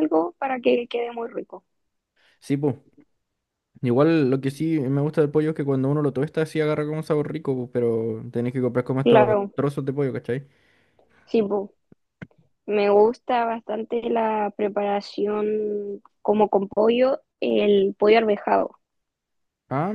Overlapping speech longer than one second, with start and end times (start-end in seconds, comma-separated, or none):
none